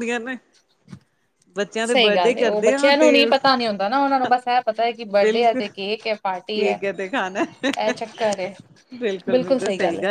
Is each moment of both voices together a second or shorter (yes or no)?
no